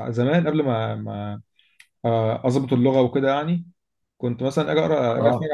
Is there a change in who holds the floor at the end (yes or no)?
no